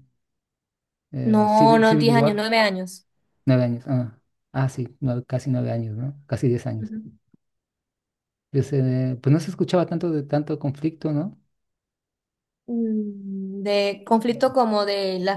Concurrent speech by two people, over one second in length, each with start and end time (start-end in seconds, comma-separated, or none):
1.2-2.5